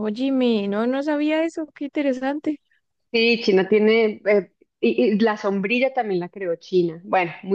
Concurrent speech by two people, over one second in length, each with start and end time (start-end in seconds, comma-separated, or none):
none